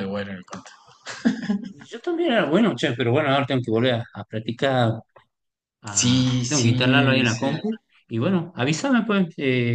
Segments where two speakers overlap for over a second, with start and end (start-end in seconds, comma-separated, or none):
6.0-7.5